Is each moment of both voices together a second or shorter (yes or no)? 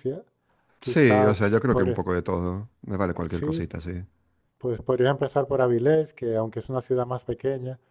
no